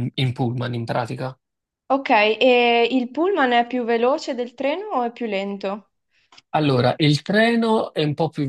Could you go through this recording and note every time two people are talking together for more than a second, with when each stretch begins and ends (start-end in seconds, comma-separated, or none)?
none